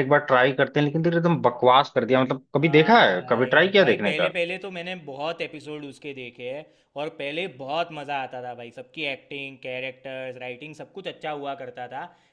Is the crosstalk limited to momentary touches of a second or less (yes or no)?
no